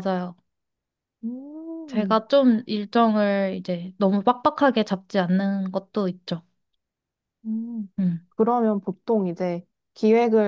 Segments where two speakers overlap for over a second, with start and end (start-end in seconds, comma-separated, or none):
none